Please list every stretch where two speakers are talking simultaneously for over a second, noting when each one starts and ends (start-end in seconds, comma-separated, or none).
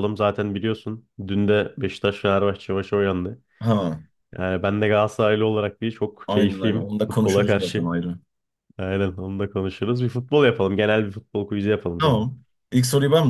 6.3-7.9